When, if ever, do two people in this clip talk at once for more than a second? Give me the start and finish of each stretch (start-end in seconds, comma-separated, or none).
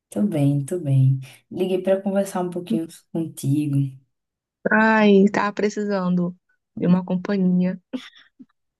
none